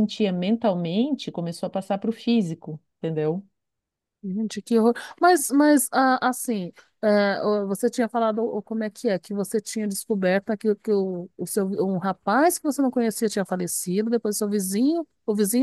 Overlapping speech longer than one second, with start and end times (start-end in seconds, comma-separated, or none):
none